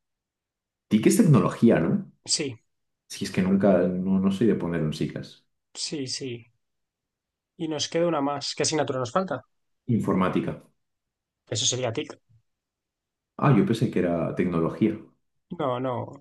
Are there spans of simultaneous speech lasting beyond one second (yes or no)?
no